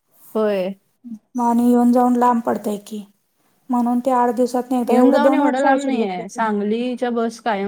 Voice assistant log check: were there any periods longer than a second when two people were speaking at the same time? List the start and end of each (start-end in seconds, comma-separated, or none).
4.9-6.4